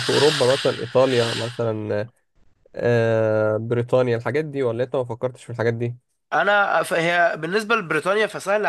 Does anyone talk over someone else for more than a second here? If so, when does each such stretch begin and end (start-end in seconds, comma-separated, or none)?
none